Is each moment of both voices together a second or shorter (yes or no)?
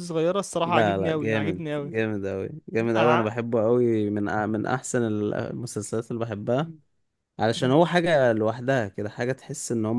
no